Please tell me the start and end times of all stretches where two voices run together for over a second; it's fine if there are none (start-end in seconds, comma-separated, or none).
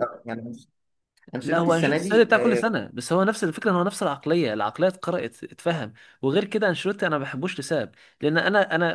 1.4-2.6